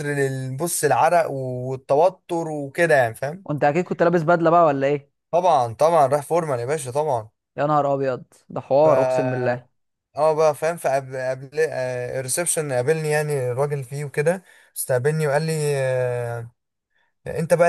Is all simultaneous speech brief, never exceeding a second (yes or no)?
yes